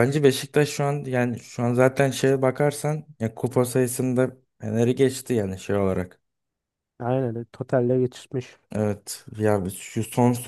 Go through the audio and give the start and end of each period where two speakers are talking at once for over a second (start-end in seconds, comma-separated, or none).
none